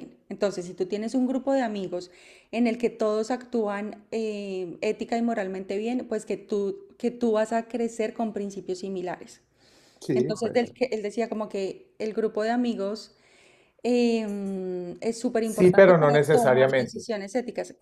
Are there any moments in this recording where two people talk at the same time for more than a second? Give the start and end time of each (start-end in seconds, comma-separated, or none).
15.4-17.1